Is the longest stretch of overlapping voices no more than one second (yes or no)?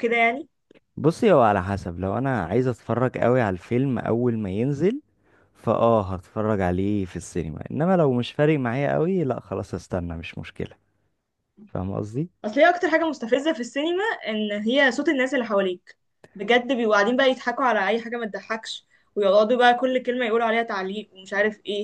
yes